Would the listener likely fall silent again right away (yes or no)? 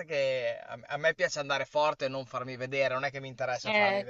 no